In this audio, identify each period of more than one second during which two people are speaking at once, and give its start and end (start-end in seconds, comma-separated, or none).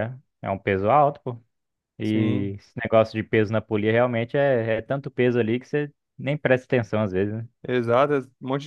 none